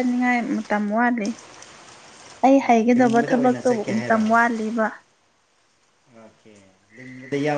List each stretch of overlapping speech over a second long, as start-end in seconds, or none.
2.6-4.2